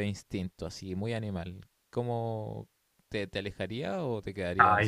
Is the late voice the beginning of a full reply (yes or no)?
yes